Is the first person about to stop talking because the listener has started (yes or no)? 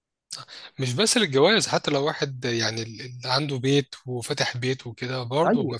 no